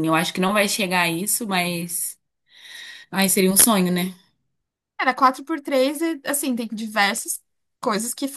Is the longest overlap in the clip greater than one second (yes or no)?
no